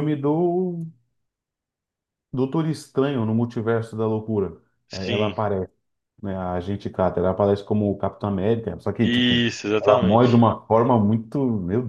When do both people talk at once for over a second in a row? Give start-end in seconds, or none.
9.0-10.5